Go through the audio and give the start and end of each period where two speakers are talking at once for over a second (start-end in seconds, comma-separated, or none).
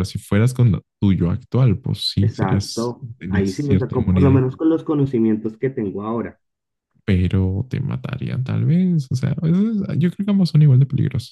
2.2-4.4